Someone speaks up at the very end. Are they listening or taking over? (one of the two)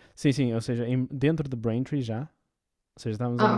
listening